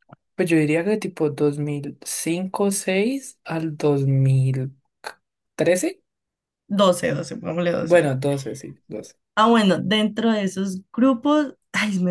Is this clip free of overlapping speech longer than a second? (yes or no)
yes